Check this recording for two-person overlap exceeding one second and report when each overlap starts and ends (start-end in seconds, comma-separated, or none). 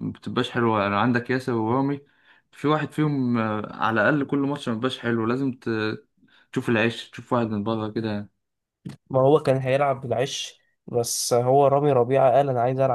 none